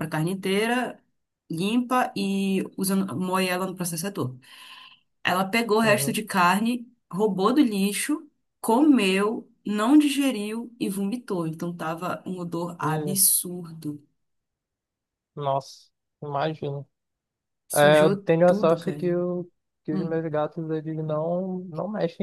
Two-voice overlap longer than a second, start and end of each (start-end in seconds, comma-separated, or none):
17.7-19.1